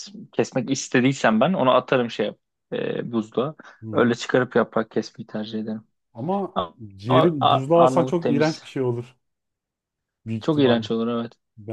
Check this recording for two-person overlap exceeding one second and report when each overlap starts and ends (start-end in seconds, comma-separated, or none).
7.0-8.6